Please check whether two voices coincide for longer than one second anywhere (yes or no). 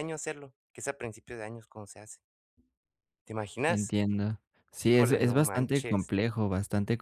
yes